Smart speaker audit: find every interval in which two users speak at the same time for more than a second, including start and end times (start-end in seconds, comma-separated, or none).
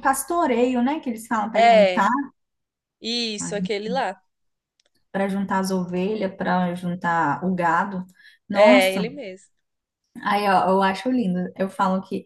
none